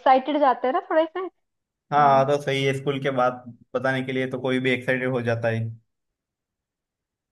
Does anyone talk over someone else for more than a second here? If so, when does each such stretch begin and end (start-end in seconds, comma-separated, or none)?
none